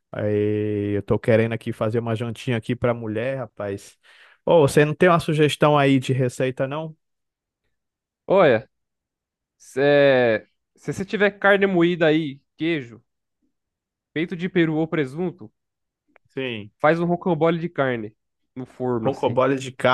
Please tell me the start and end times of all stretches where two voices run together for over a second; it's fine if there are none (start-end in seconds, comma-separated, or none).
none